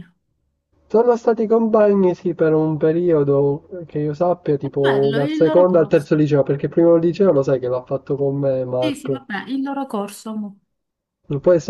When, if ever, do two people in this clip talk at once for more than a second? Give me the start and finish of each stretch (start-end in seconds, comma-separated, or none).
4.6-6.1